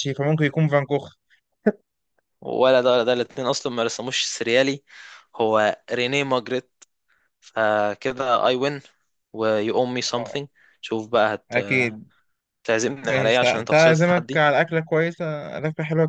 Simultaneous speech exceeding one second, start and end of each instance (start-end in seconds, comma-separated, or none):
13.0-14.4